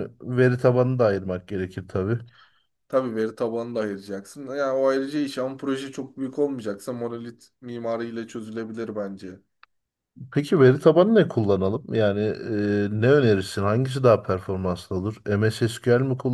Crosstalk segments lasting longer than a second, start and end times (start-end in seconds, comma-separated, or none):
none